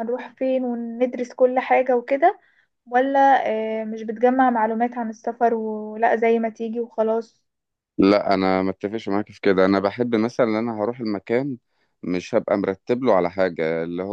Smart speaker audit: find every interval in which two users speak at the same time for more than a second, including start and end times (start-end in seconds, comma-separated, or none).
none